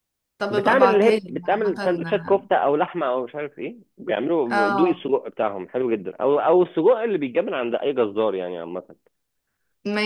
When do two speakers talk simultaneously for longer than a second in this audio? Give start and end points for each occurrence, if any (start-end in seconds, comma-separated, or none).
0.5-1.9